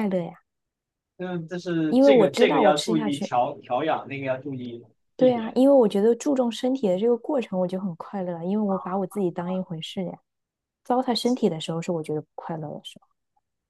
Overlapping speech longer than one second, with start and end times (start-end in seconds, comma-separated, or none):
1.9-3.3